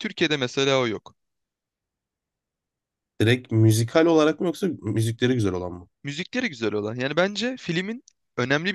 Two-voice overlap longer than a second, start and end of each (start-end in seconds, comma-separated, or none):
none